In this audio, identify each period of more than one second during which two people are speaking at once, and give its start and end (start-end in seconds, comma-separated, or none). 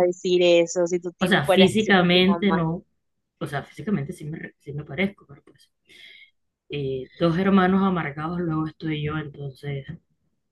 1.2-2.6